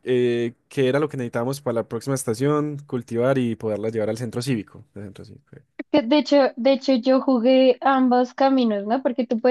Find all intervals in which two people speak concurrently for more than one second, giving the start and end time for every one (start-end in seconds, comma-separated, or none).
none